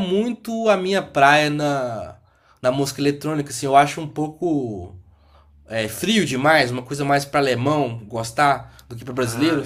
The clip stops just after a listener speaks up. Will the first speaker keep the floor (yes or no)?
no